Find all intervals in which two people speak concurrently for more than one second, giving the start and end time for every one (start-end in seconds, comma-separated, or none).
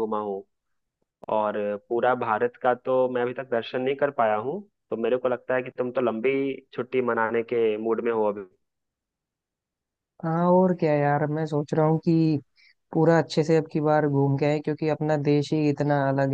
none